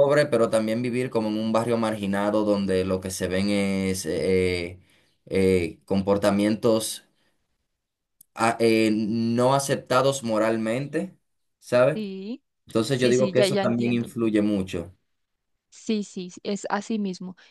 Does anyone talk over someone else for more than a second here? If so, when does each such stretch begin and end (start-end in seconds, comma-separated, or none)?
12.9-14.1